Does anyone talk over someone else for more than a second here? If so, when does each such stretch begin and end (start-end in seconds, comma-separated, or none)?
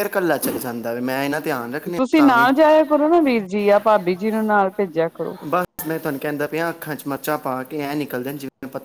none